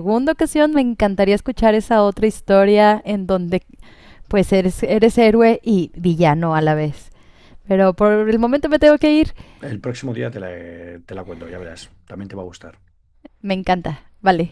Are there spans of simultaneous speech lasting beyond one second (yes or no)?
no